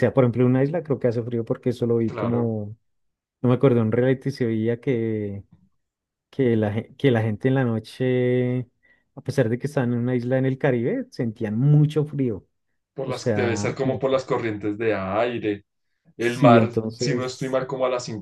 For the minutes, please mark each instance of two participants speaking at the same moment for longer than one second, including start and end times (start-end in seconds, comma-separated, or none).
13.0-14.2, 16.2-17.6